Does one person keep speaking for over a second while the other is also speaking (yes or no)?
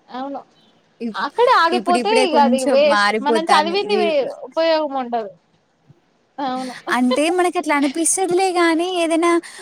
yes